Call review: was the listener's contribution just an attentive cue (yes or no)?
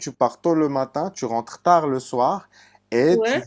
yes